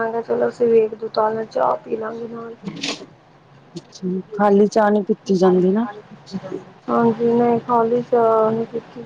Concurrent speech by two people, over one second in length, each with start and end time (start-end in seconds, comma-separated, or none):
none